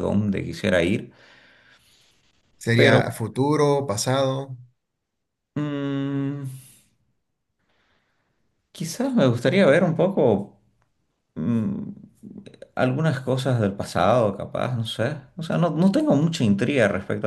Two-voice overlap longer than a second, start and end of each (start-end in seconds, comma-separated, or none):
none